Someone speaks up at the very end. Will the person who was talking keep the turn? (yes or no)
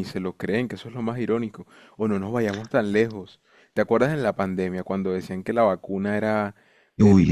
yes